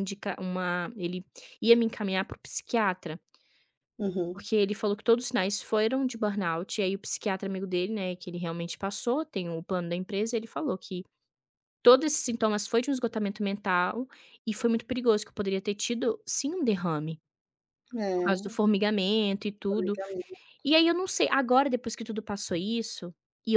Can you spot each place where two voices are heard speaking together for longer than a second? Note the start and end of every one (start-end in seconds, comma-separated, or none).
none